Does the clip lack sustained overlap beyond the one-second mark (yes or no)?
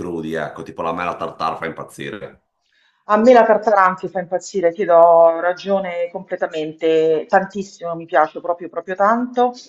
yes